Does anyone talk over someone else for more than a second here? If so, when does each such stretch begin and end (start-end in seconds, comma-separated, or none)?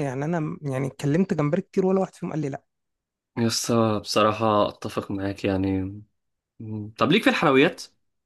none